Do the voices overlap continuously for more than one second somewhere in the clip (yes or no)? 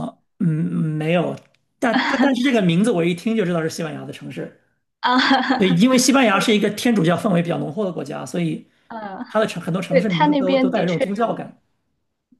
yes